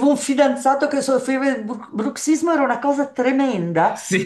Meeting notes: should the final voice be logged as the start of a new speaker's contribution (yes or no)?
no